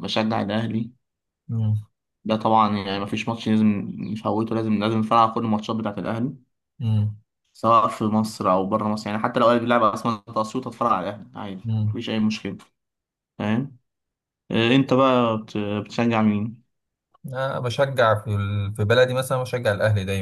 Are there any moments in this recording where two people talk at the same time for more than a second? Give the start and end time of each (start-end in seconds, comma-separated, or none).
none